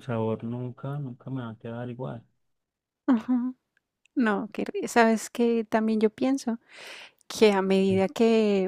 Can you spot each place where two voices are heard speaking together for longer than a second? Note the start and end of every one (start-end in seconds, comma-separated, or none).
none